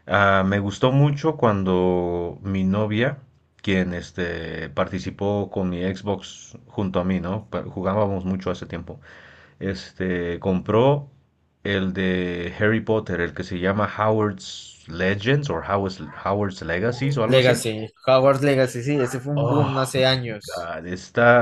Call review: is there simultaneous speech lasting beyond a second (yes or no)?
no